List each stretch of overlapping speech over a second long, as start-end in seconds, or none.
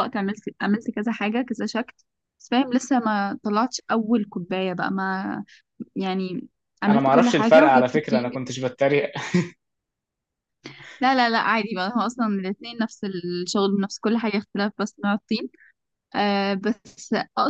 6.9-8.5